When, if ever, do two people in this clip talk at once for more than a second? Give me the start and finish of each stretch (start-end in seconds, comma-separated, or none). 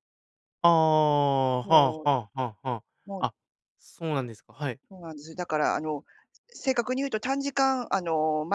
none